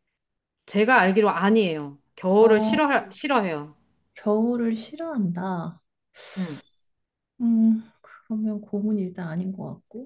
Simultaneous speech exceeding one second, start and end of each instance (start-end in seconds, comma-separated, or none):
none